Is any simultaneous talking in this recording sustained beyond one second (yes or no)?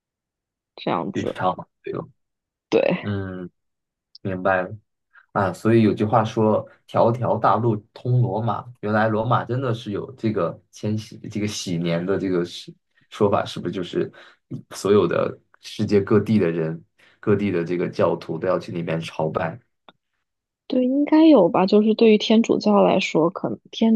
no